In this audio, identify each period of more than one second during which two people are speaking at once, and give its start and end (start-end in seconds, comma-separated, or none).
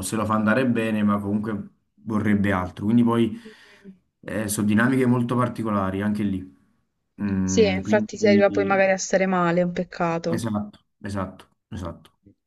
7.4-8.8